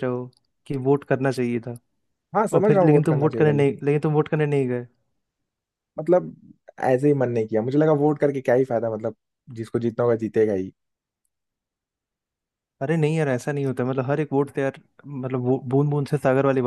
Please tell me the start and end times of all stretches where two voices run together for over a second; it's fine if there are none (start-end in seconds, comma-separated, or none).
2.5-3.8